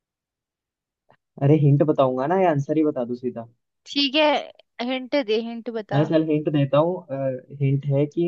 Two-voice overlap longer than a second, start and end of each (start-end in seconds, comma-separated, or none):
none